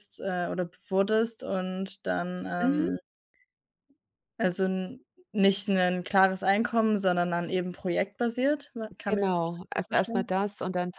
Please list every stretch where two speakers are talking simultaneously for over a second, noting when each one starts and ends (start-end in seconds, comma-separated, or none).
9.1-10.3